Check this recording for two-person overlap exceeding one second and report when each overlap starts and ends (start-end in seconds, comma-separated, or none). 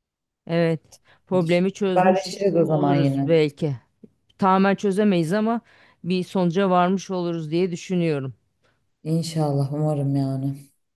1.9-3.3